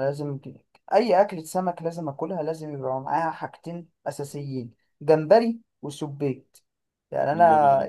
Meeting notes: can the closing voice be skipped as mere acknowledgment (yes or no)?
yes